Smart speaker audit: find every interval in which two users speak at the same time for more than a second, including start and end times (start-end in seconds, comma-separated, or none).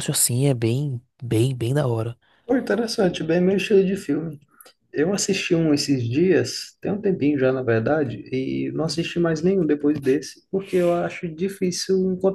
none